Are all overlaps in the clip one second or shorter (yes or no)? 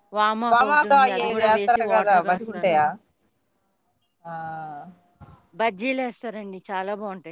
no